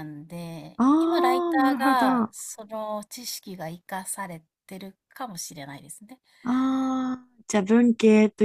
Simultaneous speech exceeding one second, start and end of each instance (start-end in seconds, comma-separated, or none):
0.8-2.3